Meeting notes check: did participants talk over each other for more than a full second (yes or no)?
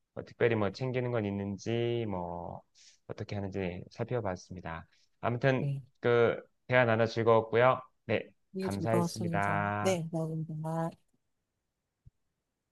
yes